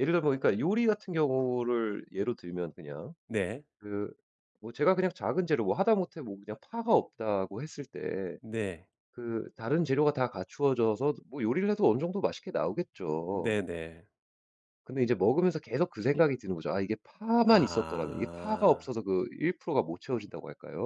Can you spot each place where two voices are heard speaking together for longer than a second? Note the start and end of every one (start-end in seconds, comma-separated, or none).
17.5-18.9